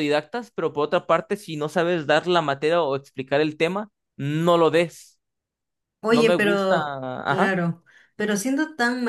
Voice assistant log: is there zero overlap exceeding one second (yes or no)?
no